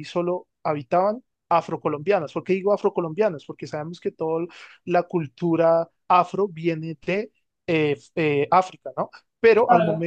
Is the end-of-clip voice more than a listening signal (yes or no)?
yes